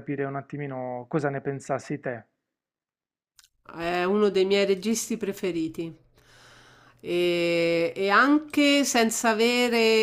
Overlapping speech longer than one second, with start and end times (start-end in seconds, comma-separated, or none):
none